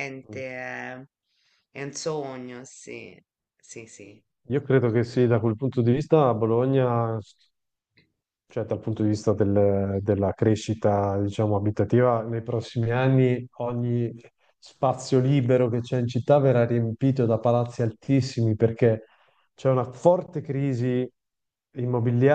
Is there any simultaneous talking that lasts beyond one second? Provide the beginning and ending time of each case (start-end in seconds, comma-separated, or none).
none